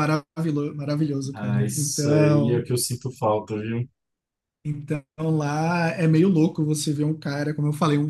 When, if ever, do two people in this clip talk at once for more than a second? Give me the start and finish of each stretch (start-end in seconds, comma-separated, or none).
1.3-2.7